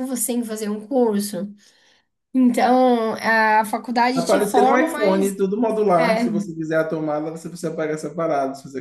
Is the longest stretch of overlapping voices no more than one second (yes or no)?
no